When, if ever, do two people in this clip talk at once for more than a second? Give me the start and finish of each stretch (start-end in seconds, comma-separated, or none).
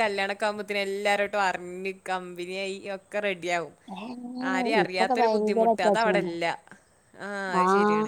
4.8-6.3